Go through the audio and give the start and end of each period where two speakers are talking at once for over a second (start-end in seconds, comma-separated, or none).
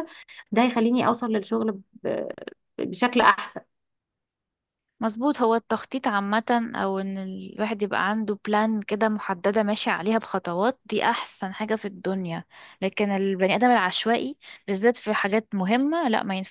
none